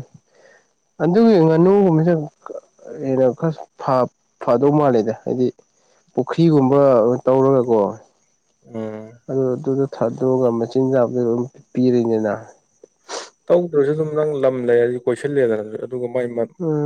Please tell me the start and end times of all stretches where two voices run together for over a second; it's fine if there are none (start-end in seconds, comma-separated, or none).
none